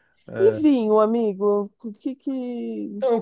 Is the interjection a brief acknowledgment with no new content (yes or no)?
no